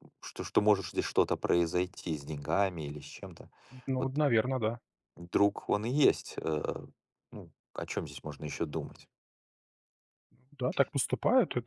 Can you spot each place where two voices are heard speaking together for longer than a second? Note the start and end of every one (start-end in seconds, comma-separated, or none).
none